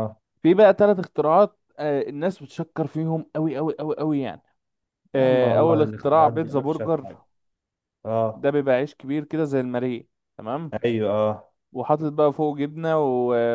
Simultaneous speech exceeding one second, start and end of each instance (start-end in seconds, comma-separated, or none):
5.2-7.1